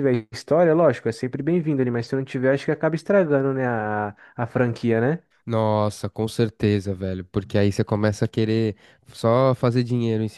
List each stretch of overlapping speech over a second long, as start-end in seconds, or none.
none